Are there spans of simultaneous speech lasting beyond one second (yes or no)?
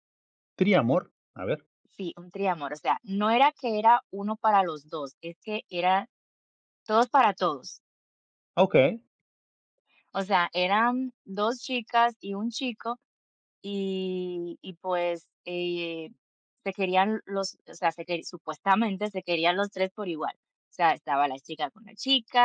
no